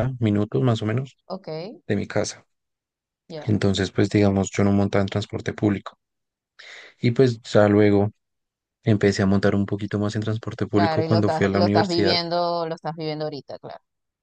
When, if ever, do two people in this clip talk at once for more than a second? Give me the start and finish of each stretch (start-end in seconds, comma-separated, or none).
10.7-12.2